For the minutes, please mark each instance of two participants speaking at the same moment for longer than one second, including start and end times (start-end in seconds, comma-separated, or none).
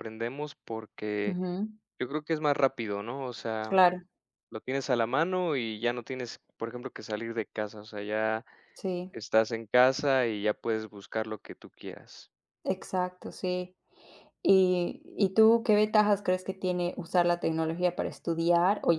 none